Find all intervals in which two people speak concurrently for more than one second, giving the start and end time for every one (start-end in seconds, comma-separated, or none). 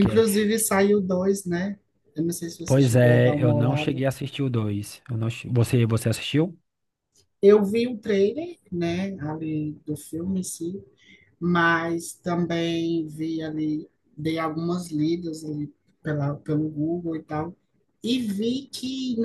2.6-4.0